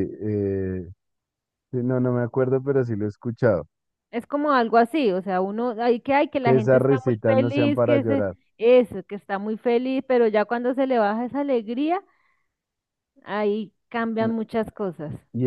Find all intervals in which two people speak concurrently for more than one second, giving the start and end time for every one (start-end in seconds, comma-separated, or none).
6.4-8.3